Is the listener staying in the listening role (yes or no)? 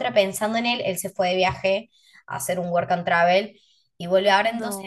yes